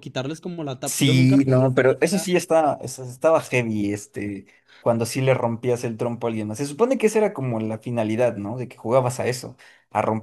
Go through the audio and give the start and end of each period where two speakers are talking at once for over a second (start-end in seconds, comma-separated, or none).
0.8-2.3